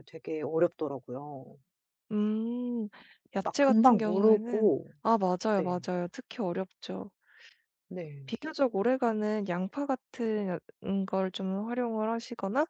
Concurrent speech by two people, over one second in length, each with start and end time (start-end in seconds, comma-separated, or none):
3.4-4.9